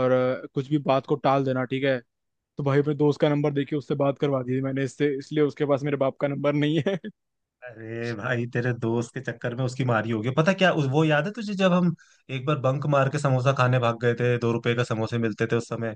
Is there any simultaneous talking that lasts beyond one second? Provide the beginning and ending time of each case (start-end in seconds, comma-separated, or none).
none